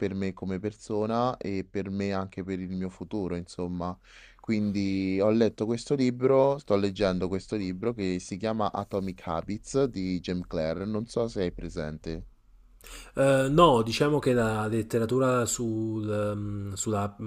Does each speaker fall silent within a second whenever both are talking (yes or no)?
yes